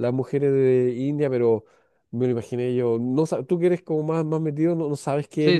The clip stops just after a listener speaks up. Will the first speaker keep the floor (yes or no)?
no